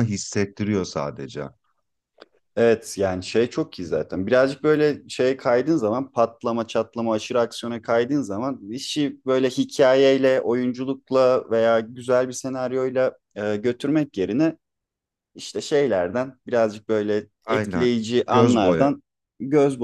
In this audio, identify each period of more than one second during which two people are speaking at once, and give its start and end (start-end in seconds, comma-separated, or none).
17.4-18.9